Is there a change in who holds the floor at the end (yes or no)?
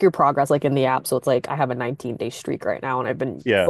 no